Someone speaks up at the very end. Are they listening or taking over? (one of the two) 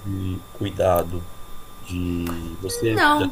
listening